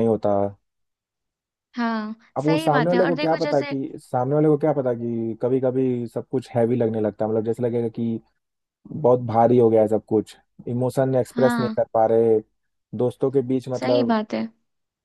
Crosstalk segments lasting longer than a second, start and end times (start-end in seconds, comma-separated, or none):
2.4-3.7